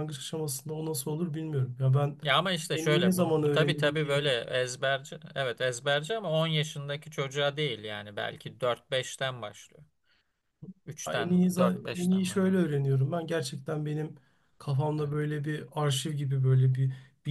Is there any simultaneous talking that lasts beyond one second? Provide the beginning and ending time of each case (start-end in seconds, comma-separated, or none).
2.7-4.3, 11.1-12.6